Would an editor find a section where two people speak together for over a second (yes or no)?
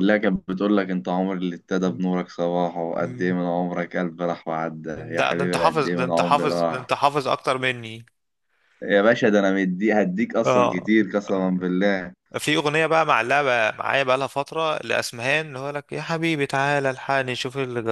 yes